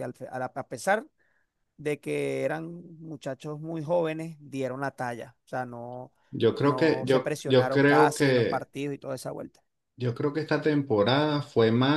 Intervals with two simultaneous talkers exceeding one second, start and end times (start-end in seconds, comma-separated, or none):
6.6-8.7